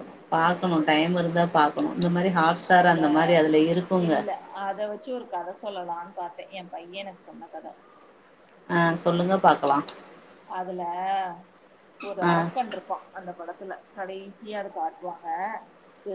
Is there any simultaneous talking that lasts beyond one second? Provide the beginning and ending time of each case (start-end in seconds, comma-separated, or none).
none